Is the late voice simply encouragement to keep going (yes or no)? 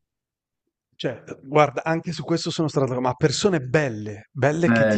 yes